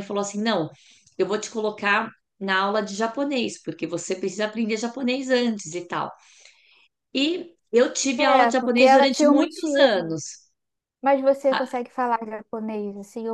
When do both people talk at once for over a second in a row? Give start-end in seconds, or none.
8.2-10.2